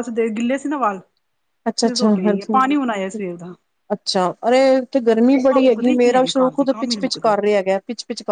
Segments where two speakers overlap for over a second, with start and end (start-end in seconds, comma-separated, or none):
5.5-7.3